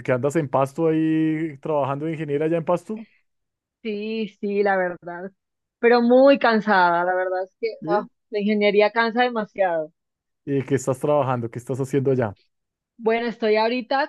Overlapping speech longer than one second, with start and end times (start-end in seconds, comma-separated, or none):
none